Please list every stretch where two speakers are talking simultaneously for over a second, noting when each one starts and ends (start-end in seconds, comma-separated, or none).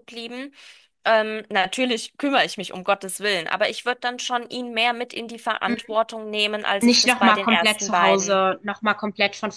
6.8-8.4